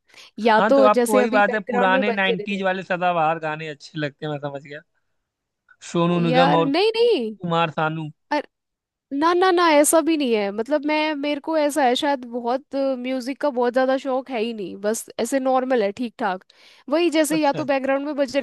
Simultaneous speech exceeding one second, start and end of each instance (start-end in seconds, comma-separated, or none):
0.5-2.6